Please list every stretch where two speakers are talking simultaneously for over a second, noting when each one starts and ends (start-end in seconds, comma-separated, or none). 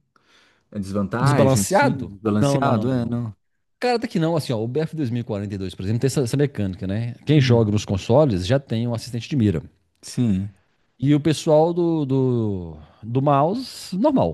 1.2-3.2